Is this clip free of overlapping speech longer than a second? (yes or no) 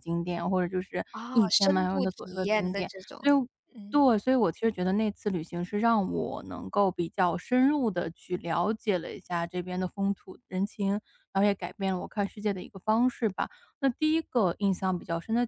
no